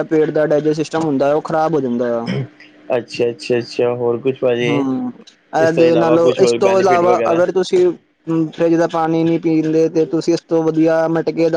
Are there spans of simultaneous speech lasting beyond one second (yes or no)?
yes